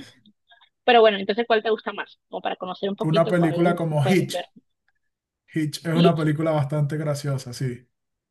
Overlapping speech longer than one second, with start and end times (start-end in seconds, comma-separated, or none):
3.0-4.5